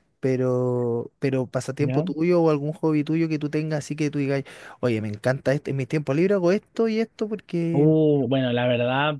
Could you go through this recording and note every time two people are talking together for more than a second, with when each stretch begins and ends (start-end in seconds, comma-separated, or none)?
none